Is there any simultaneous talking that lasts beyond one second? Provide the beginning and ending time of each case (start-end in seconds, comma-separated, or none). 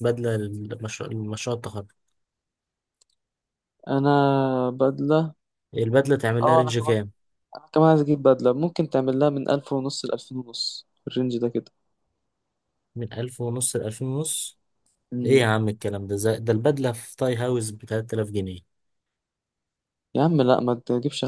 none